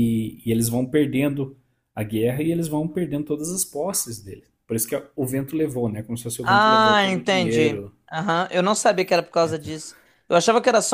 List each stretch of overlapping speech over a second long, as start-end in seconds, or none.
6.4-7.9